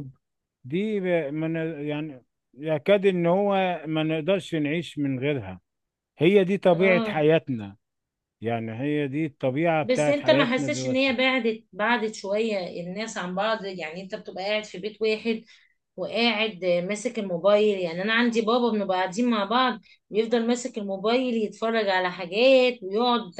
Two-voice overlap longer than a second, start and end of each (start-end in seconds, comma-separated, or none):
9.8-11.1